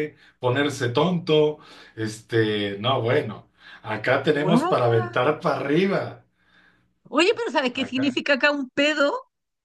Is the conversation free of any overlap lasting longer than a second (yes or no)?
yes